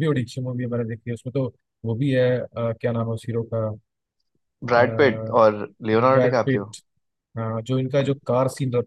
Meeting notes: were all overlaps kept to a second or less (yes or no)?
yes